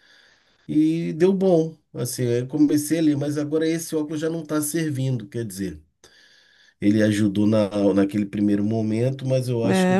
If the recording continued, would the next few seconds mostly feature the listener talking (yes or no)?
yes